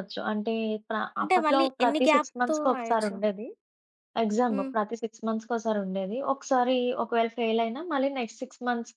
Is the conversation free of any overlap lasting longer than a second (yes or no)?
no